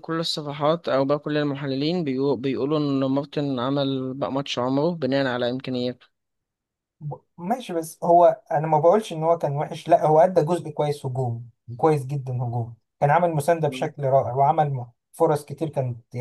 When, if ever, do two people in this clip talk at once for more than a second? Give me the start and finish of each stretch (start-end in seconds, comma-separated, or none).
none